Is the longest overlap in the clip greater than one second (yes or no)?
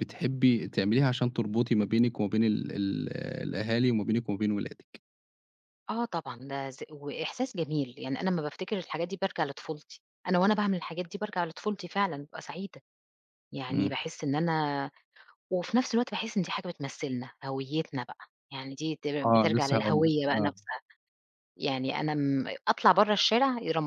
yes